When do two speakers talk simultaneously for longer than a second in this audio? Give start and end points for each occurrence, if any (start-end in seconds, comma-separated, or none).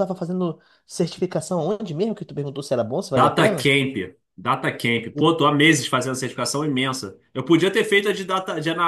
none